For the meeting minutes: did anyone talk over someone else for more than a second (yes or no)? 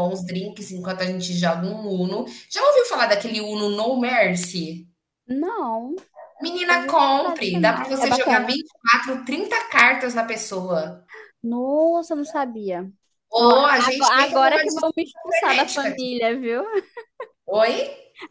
yes